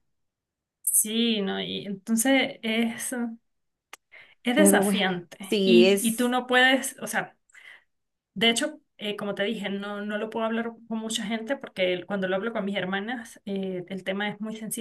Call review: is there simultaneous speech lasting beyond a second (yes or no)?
yes